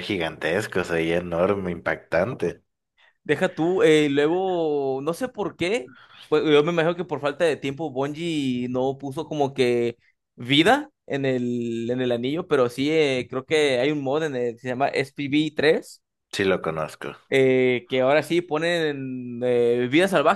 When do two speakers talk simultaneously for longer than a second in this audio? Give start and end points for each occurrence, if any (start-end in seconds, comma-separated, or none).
none